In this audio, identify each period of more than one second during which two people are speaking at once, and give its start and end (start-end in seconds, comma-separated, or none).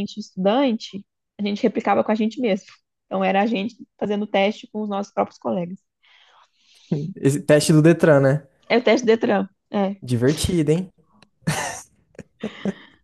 none